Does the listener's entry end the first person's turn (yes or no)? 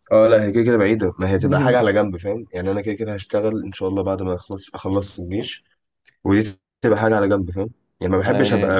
no